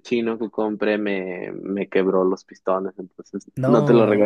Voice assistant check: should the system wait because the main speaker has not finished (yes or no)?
yes